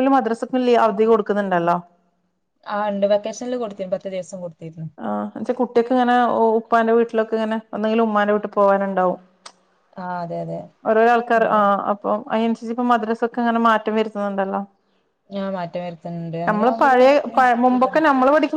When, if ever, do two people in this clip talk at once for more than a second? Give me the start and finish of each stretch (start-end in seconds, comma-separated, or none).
none